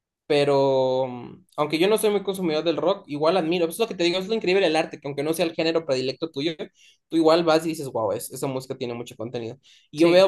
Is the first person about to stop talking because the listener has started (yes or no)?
no